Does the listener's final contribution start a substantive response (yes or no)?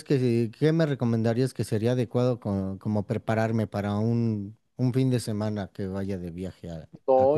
yes